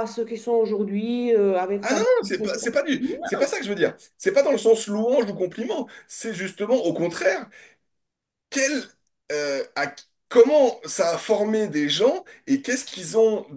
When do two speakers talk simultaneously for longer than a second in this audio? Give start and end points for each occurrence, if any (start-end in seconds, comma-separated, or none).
none